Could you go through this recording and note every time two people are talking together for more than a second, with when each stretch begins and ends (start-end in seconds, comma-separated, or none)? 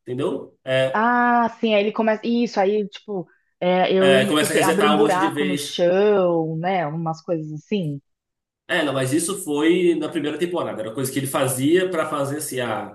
4.0-5.8